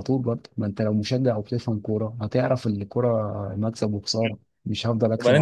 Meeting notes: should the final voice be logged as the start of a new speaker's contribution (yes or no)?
yes